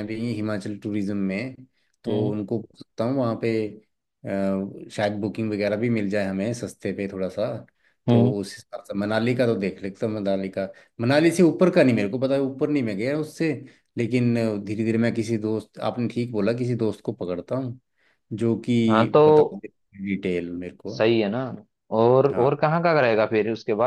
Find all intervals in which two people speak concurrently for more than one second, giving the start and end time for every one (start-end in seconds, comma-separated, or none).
none